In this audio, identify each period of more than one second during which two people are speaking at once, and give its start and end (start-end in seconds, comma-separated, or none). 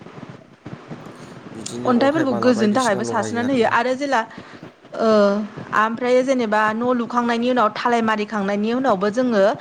1.9-3.7